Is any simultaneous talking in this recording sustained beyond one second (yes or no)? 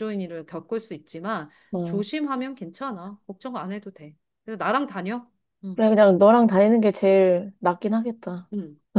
no